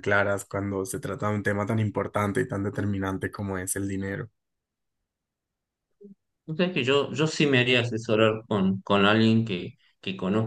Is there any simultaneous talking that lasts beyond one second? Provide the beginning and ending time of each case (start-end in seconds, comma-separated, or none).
none